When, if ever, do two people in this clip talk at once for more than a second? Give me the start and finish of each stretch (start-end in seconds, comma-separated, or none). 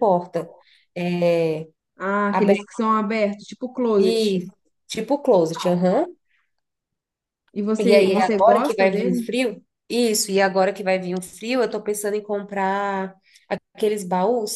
7.8-9.3